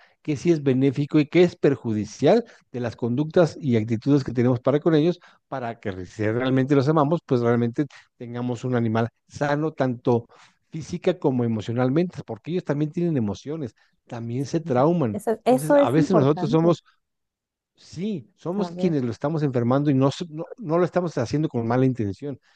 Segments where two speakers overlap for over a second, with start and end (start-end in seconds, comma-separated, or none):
15.1-16.8